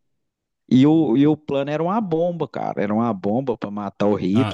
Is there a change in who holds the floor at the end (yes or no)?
yes